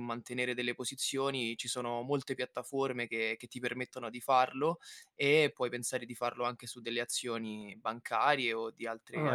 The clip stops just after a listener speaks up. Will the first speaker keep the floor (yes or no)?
no